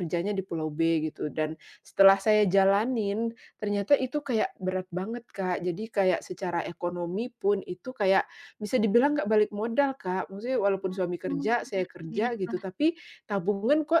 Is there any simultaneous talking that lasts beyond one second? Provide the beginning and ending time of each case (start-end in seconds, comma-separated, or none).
10.9-12.6